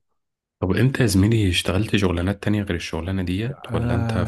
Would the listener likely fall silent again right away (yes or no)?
no